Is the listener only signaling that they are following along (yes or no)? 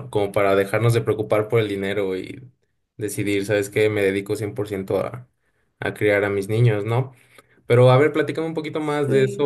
yes